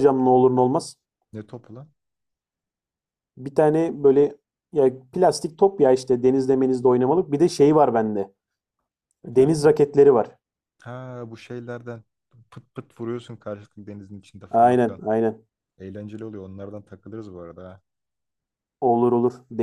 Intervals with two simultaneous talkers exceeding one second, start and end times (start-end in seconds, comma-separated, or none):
none